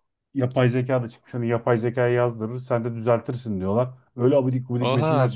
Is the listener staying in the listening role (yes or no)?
no